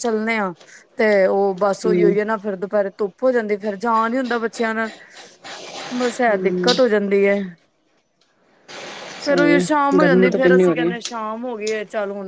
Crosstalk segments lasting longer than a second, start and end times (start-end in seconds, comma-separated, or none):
9.2-10.9